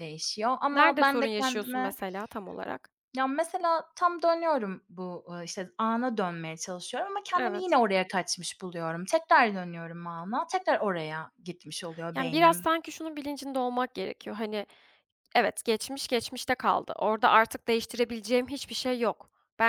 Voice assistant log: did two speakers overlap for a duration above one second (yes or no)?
yes